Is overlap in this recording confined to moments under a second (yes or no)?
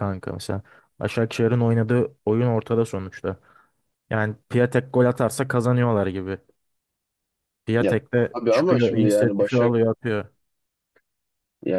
no